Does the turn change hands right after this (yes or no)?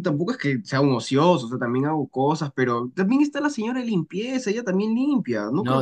yes